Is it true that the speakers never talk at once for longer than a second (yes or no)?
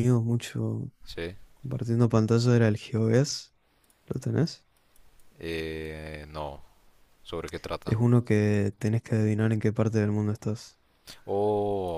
yes